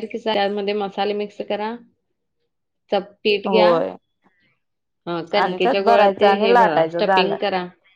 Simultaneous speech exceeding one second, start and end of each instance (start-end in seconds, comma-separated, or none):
5.4-7.4